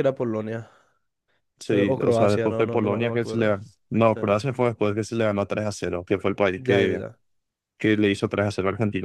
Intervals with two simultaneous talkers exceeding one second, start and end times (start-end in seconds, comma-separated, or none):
1.7-3.5